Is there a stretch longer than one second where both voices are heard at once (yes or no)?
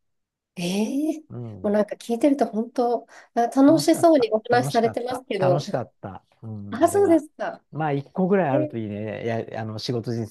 yes